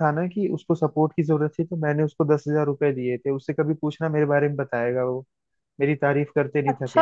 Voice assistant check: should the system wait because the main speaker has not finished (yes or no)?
no